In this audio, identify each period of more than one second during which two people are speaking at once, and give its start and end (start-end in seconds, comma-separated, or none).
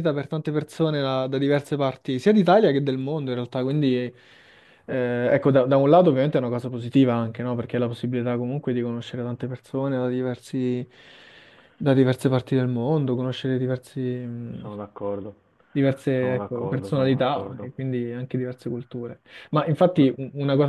16.1-17.7